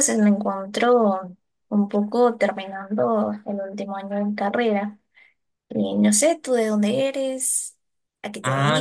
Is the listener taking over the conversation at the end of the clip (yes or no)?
yes